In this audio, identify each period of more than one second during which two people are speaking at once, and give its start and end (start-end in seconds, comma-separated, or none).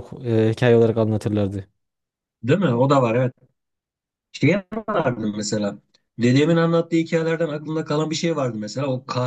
none